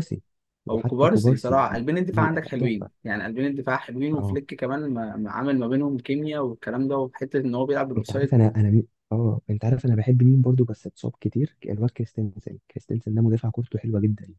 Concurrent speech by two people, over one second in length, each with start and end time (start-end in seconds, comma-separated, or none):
0.7-2.9